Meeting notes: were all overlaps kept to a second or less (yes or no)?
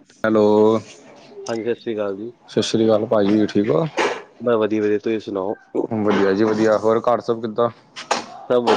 yes